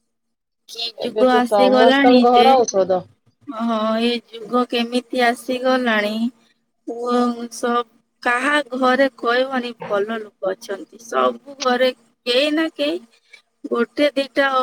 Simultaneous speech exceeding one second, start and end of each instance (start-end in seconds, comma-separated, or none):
1.0-2.5